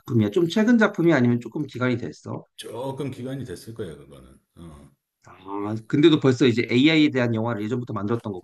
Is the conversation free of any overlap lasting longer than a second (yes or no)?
yes